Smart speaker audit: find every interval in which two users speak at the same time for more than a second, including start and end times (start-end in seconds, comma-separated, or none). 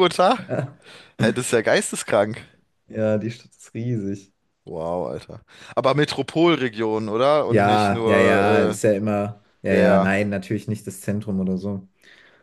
7.5-8.8